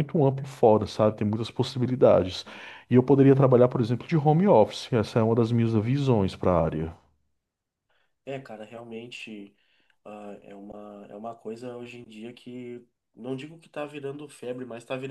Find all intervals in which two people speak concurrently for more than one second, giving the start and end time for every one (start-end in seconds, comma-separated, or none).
none